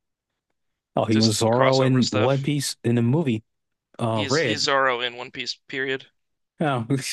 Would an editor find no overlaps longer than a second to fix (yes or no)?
no